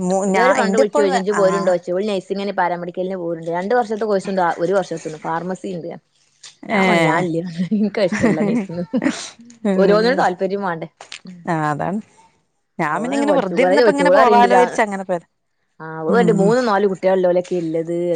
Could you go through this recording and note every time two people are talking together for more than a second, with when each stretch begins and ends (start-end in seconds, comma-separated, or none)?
13.0-14.6